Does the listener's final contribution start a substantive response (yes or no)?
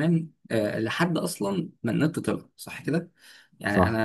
no